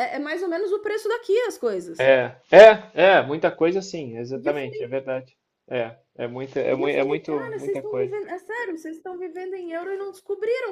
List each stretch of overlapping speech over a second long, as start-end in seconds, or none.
6.7-8.2